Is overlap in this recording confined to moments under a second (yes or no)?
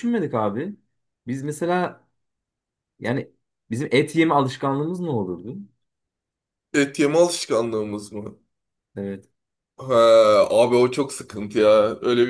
yes